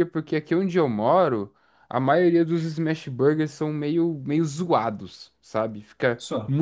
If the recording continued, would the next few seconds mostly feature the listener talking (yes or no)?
no